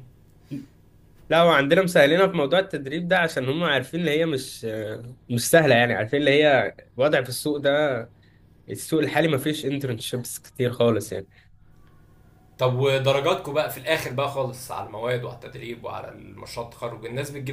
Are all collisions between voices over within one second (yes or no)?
yes